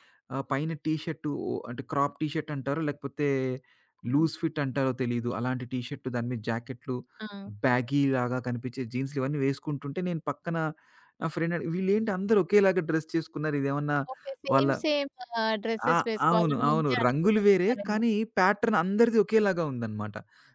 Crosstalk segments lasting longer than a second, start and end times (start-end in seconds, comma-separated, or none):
15.9-18.0